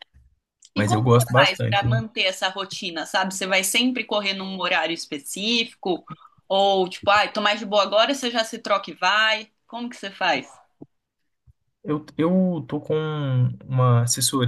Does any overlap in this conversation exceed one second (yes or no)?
yes